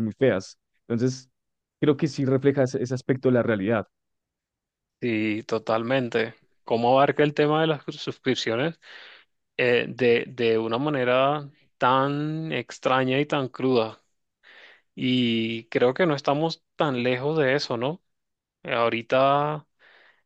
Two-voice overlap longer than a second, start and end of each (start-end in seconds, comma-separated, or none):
none